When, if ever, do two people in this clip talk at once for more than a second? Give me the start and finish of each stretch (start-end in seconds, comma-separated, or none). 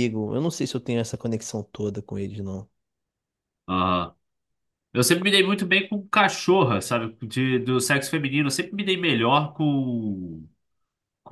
none